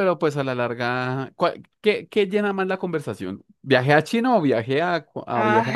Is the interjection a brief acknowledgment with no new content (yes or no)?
no